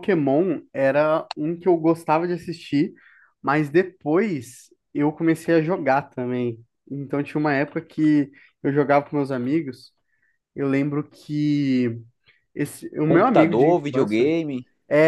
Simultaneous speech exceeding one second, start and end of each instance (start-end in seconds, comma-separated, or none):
13.0-14.3